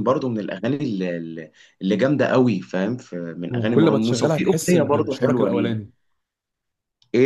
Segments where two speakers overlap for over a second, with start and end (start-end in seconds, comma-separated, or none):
3.5-5.8